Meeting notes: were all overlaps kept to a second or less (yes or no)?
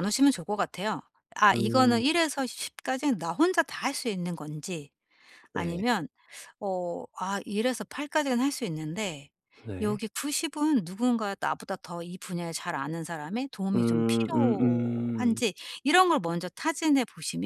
no